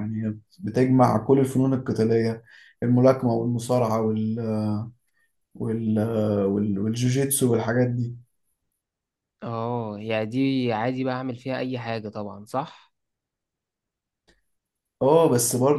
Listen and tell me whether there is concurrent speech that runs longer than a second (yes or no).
no